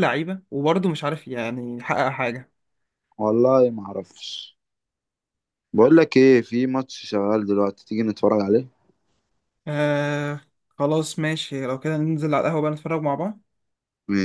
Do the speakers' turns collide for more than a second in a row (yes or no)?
no